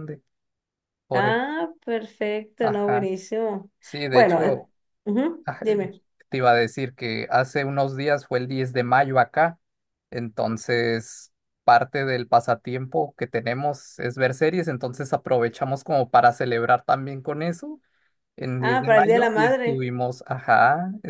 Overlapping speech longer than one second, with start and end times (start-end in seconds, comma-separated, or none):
18.6-19.9